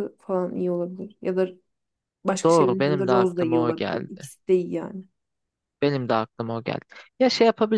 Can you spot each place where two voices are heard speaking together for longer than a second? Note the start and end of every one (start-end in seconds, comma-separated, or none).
2.4-4.3